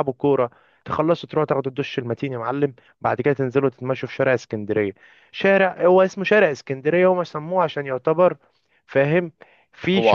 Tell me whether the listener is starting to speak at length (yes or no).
yes